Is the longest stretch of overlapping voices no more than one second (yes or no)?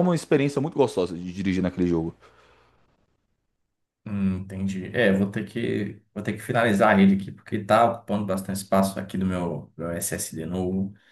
yes